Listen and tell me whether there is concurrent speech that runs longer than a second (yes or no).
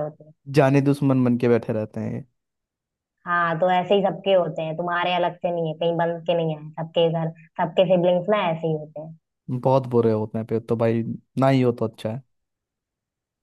no